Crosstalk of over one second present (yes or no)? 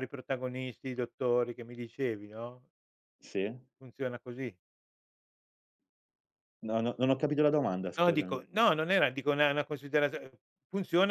no